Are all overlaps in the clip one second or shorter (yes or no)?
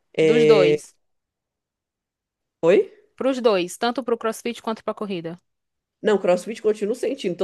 yes